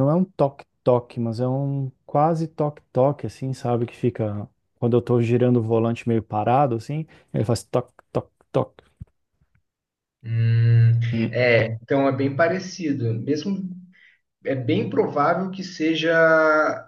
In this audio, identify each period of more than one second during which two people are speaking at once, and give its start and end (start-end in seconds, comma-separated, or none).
none